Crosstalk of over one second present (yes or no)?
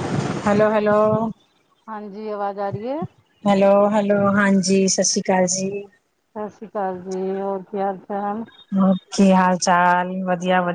no